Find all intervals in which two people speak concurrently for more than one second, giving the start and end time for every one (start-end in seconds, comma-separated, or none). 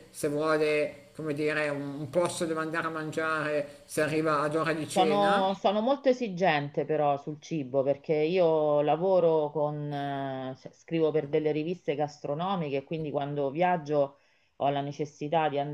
none